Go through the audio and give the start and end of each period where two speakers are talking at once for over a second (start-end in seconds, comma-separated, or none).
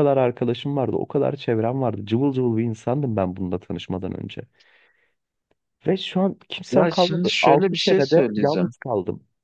6.7-8.7